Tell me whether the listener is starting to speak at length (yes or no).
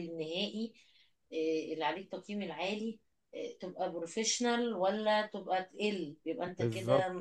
yes